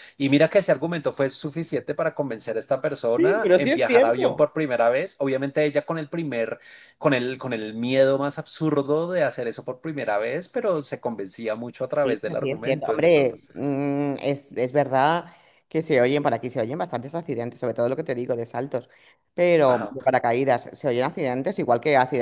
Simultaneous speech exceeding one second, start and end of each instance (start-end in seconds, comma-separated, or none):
3.2-4.5, 12.0-13.6